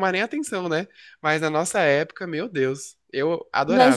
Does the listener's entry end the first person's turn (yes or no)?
yes